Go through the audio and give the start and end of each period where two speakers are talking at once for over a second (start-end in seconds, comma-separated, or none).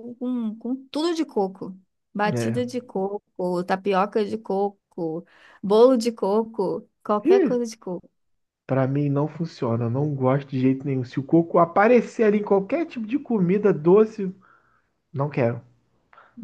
none